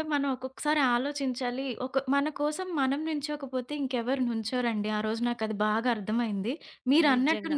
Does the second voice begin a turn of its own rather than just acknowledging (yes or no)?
no